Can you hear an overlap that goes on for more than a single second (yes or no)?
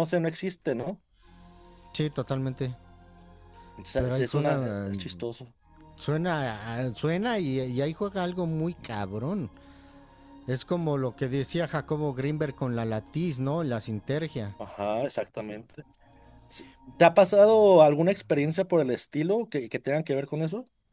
yes